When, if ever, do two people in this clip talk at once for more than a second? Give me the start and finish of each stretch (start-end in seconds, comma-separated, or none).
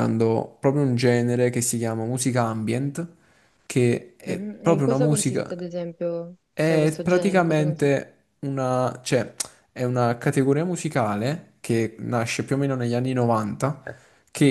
4.2-5.5, 6.5-8.0